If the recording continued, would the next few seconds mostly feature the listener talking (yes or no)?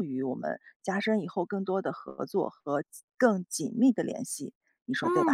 yes